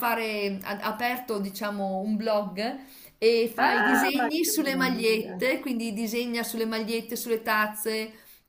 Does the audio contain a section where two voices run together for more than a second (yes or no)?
yes